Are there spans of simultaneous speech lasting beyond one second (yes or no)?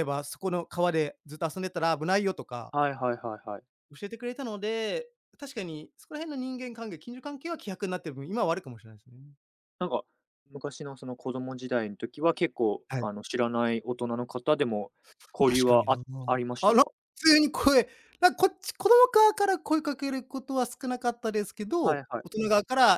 no